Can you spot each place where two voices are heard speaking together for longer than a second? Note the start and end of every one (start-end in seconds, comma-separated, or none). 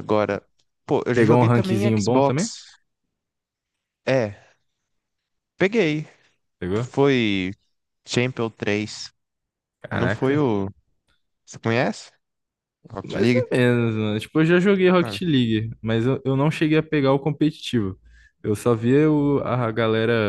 1.1-2.5